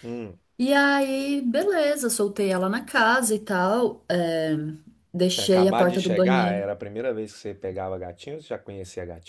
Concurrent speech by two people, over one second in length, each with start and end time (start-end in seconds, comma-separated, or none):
5.3-6.6